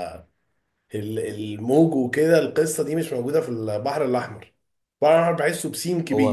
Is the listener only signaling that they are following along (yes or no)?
no